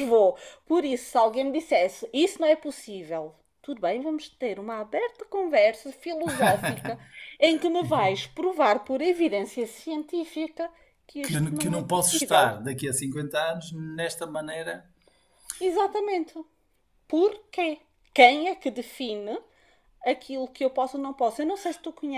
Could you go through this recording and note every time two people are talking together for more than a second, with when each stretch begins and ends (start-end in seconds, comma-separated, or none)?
11.2-12.5